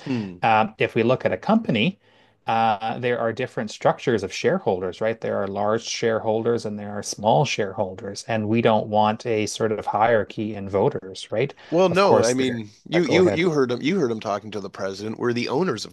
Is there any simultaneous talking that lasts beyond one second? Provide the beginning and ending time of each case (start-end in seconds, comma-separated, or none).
11.9-13.4